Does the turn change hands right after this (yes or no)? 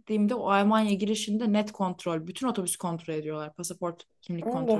yes